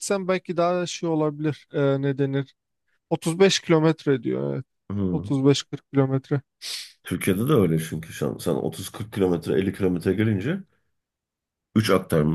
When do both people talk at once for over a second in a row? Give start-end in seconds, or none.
none